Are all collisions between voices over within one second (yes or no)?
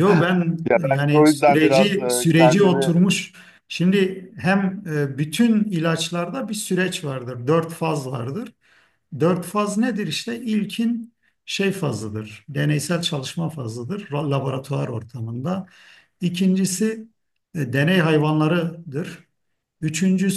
no